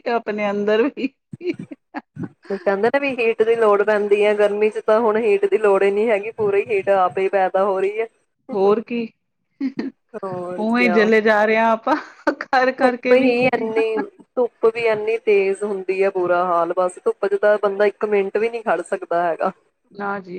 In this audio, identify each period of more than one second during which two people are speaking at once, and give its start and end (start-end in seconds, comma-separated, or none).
none